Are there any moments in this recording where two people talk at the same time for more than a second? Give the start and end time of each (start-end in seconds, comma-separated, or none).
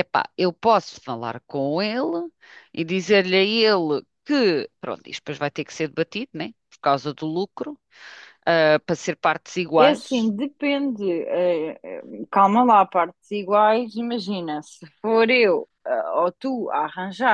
none